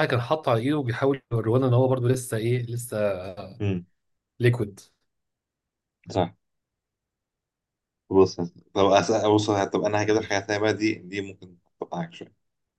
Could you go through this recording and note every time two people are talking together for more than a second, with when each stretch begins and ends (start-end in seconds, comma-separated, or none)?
none